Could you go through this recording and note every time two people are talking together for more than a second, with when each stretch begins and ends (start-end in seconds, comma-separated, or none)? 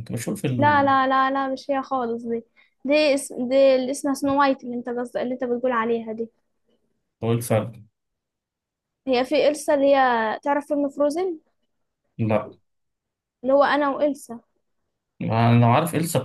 none